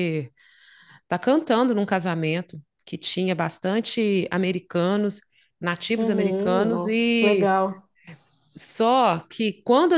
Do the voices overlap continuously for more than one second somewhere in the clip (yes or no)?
yes